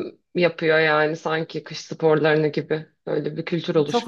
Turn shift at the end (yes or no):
yes